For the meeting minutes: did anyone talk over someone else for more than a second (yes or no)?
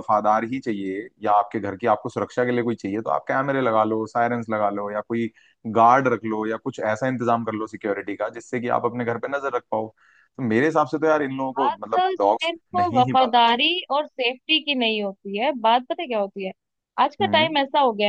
yes